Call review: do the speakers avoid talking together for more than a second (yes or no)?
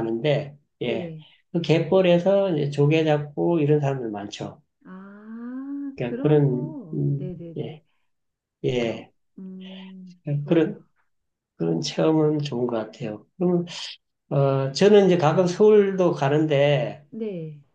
no